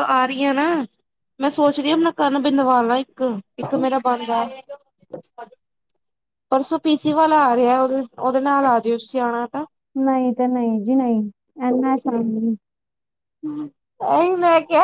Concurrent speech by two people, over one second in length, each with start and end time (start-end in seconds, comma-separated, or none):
none